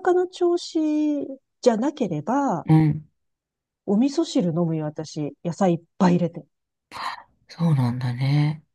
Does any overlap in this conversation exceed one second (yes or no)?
no